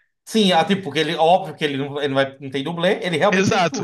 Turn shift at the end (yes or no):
yes